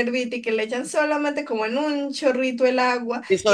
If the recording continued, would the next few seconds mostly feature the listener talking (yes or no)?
yes